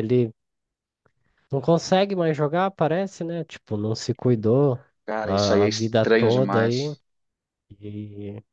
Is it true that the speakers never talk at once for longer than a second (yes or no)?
no